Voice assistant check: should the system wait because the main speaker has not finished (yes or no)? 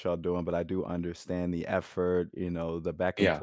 yes